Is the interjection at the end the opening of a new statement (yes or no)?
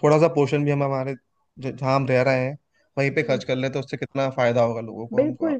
yes